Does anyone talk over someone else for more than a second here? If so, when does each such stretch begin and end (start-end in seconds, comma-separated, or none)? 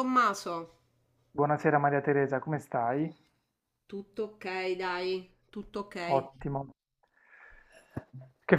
none